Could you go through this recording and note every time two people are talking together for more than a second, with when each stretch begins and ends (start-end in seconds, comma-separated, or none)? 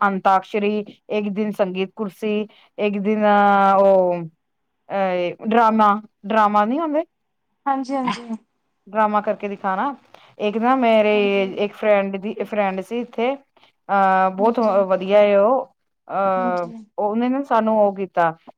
none